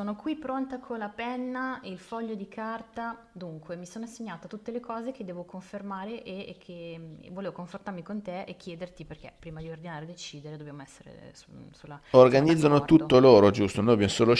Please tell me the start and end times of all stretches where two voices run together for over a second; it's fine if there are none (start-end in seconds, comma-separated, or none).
12.1-13.3